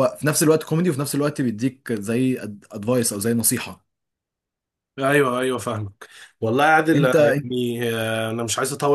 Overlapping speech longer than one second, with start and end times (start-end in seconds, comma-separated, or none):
none